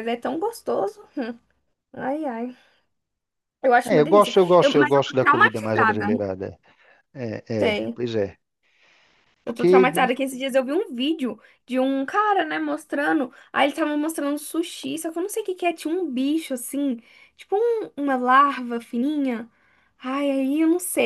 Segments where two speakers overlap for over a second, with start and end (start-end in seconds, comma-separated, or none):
3.9-6.1